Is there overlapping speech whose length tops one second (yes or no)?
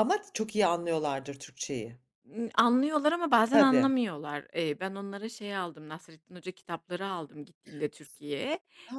no